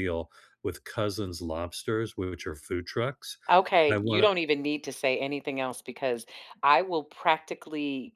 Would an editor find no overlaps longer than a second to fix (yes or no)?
yes